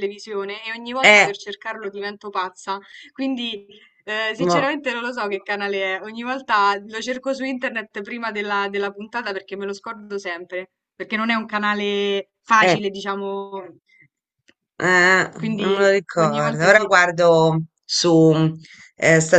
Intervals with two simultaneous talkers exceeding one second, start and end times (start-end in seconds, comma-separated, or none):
15.4-16.9